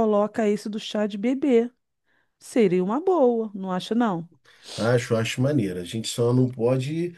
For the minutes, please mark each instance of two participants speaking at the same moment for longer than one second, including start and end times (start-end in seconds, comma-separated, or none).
none